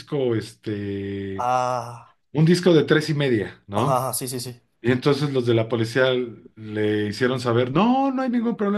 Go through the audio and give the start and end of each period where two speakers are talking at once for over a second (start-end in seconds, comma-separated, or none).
none